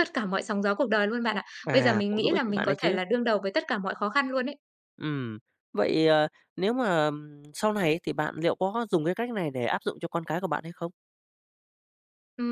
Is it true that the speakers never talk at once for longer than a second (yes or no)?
no